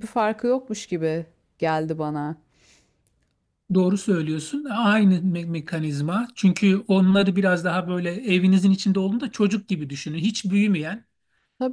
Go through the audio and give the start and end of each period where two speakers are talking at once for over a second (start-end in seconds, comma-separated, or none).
none